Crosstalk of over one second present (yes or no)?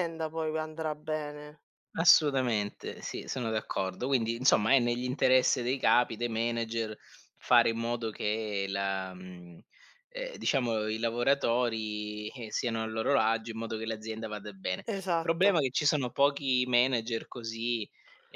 no